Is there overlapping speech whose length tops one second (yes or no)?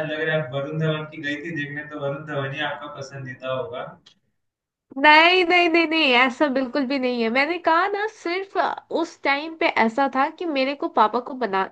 no